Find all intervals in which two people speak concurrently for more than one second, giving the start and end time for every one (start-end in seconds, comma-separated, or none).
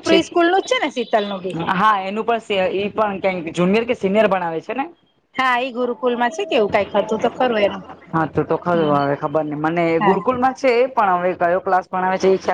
none